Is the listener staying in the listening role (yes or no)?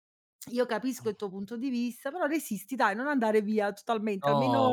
no